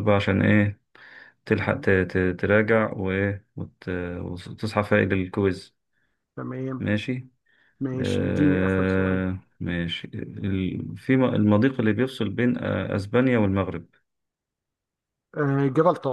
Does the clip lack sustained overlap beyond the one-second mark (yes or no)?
no